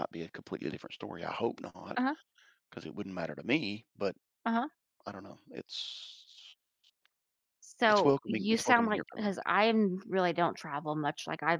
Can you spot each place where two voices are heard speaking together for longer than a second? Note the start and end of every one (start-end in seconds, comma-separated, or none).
7.9-9.3